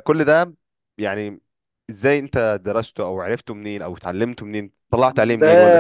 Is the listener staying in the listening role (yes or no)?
no